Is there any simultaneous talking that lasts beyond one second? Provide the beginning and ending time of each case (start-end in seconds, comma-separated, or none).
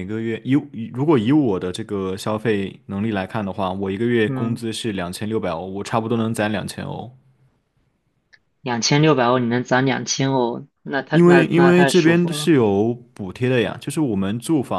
11.1-12.5